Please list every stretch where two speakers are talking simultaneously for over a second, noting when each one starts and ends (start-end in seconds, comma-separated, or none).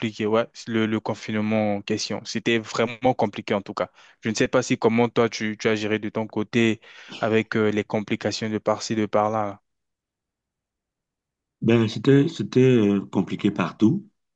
none